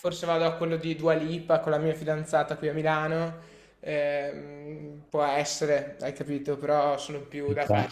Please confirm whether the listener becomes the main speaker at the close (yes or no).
no